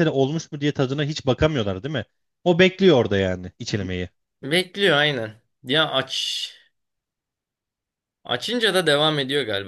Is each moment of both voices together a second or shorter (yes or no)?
yes